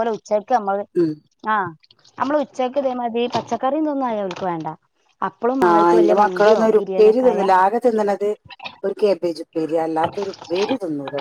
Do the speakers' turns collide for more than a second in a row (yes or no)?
yes